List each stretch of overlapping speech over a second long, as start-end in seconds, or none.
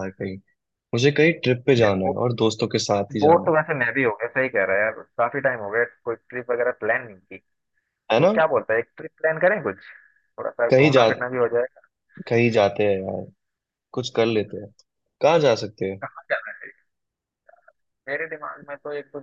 none